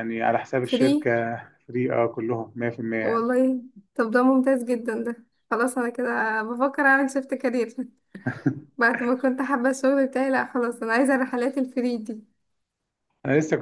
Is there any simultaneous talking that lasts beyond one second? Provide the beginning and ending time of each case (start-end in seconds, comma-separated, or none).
none